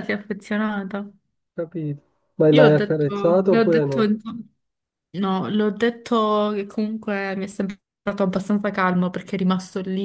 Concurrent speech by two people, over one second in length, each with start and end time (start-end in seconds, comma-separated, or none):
2.5-4.1